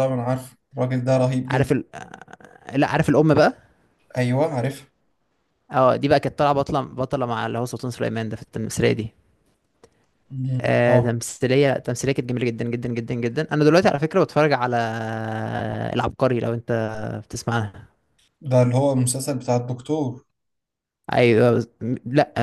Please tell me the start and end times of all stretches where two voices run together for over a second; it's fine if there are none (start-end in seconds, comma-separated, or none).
none